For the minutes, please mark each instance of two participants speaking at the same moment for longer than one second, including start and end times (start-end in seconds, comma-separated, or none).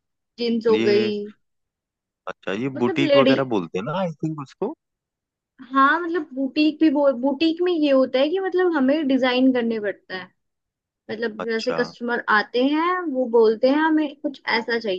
none